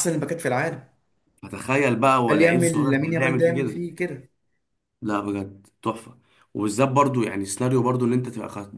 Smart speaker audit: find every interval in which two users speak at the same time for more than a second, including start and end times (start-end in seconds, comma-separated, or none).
2.3-3.8